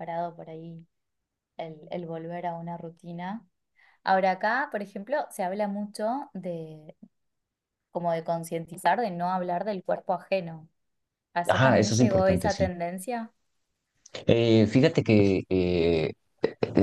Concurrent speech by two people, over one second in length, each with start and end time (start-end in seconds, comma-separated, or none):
11.5-12.7